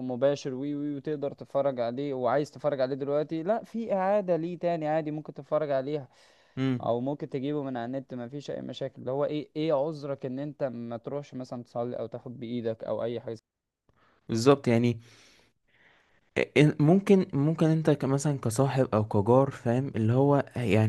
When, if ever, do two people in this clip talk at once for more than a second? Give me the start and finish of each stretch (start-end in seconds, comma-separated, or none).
none